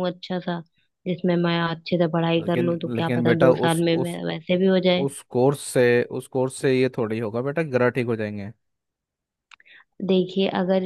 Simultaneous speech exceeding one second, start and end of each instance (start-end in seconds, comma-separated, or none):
2.4-4.2